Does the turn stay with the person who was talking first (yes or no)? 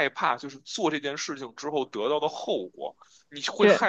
yes